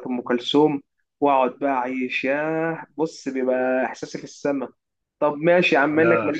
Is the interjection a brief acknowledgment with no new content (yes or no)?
yes